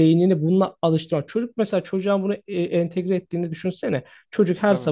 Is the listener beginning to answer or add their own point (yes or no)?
no